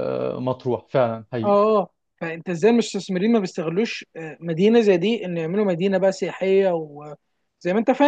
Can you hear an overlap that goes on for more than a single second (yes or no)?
no